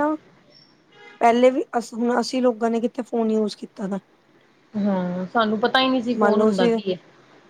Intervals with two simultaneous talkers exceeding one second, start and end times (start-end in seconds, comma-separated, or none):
none